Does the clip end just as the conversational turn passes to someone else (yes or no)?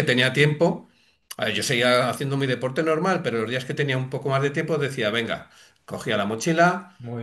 no